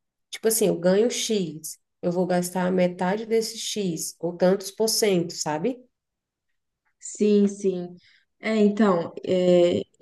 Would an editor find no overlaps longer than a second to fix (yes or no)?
yes